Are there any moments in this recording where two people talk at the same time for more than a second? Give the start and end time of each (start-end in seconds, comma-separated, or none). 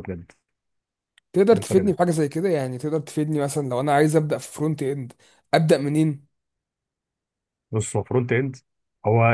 none